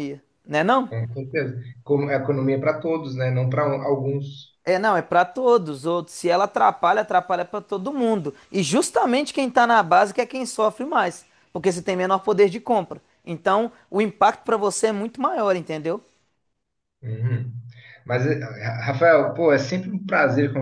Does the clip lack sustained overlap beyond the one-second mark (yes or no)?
yes